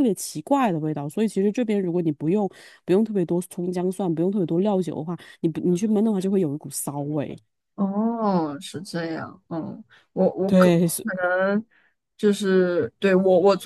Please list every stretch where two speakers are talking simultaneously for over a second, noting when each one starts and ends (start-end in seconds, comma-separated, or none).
none